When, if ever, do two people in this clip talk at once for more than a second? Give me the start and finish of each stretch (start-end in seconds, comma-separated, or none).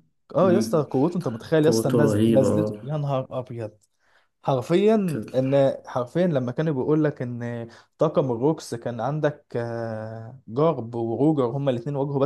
1.6-2.9